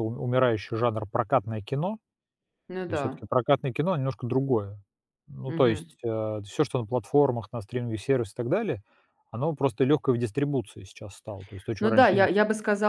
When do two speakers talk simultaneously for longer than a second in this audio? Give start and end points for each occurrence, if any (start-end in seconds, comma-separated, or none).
none